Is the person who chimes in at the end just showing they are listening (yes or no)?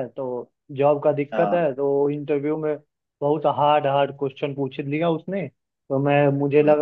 yes